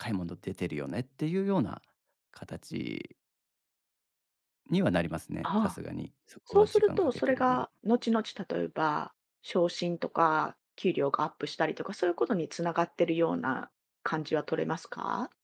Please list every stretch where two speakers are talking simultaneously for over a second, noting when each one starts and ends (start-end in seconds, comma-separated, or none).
6.5-7.7